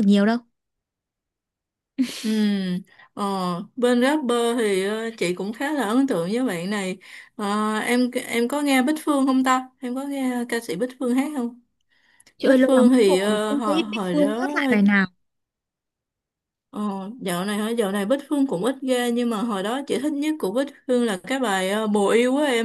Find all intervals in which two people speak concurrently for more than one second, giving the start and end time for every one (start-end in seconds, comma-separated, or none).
12.4-14.5